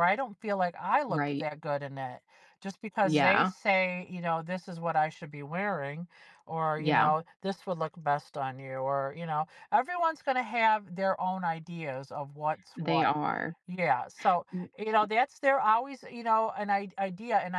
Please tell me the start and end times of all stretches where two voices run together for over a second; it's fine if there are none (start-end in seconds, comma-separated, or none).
none